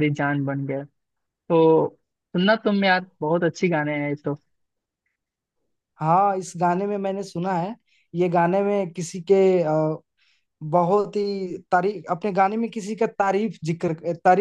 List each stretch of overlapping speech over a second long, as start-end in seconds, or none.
none